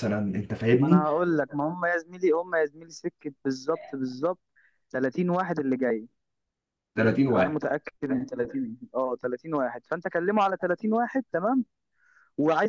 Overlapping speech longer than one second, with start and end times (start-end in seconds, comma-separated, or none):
none